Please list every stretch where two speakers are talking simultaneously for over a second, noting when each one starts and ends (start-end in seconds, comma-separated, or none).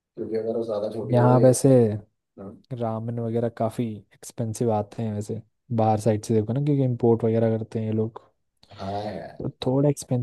none